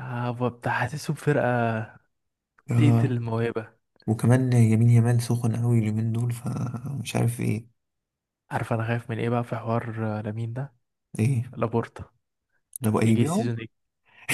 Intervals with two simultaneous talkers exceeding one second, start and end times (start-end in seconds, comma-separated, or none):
none